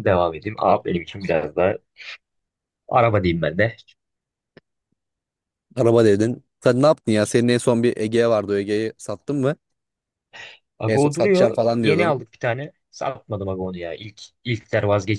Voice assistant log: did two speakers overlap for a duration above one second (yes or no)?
yes